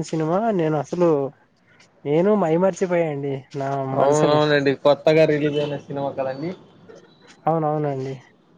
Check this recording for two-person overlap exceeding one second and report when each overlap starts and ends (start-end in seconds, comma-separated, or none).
none